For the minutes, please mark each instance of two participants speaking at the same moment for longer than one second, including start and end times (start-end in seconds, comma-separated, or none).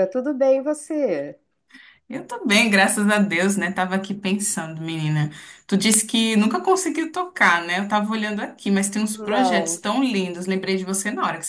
none